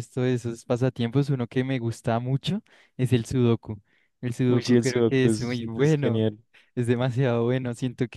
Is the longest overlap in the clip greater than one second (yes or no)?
yes